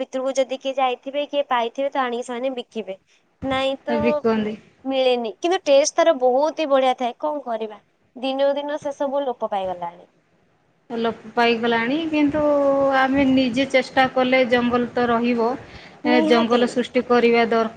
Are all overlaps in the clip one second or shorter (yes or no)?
yes